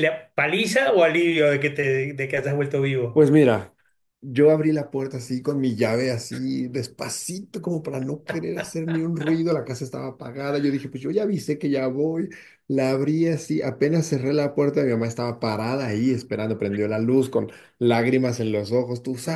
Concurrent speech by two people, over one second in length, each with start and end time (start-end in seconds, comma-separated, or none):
none